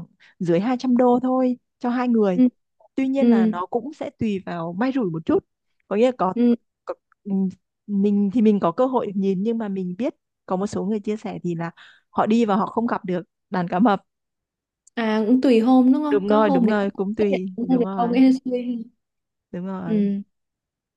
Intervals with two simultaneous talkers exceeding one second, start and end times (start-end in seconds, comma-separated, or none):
16.1-18.1